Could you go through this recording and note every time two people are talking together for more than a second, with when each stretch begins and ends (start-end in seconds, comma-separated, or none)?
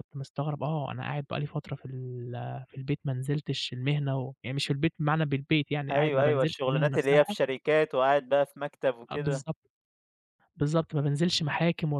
5.9-7.3